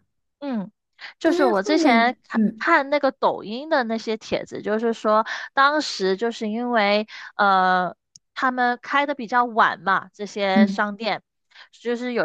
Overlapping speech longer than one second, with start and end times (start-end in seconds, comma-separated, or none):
1.2-2.6